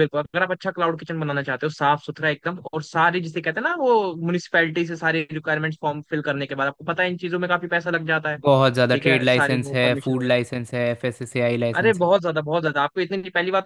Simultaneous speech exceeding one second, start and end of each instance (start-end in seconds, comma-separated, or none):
8.9-10.3